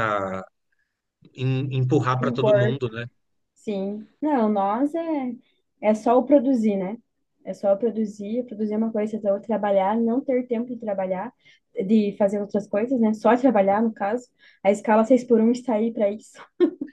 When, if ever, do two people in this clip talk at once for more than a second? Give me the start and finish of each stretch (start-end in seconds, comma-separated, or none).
none